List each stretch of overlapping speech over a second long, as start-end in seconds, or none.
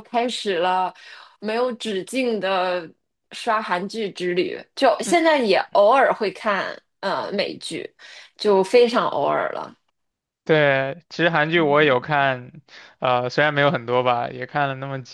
none